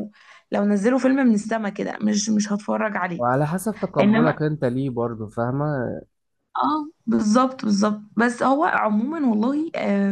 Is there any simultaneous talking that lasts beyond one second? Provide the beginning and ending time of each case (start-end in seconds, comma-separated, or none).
none